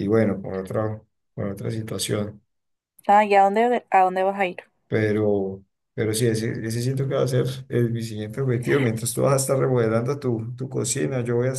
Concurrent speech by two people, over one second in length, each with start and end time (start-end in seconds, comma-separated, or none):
none